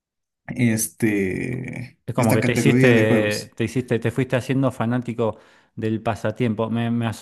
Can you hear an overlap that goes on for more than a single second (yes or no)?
yes